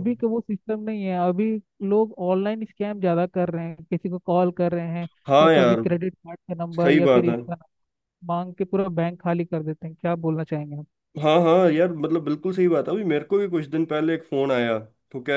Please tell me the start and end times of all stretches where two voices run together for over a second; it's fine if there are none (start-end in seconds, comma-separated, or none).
none